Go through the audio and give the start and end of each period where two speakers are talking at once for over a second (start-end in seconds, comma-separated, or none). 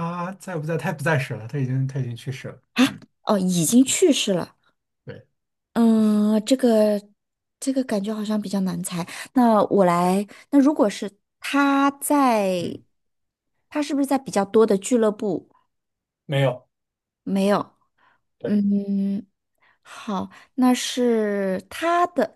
none